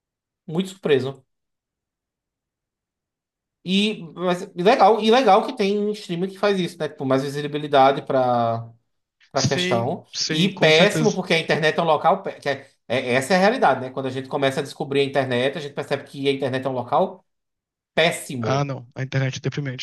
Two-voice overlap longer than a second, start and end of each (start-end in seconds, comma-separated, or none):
9.3-11.2